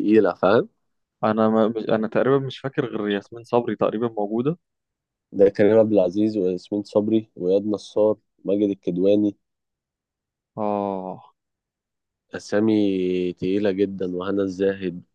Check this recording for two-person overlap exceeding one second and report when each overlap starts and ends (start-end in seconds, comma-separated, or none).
none